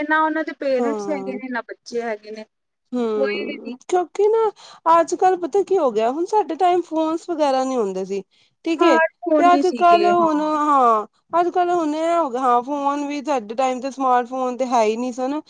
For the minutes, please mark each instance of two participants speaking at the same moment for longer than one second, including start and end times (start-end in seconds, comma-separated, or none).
8.7-10.3